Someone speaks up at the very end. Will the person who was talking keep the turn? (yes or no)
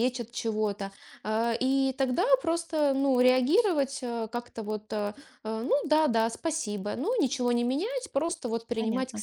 yes